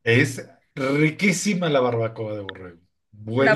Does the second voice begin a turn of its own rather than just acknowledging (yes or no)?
yes